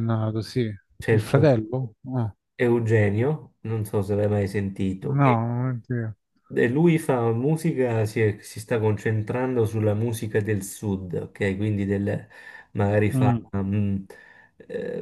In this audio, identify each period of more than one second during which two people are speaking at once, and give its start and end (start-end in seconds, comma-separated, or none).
none